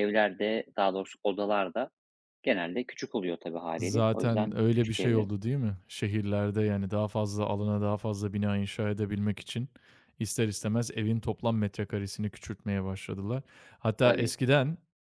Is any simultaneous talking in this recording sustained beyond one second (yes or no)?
yes